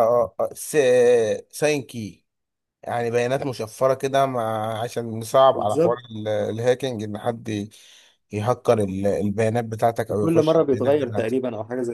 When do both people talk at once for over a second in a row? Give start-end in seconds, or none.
10.1-11.3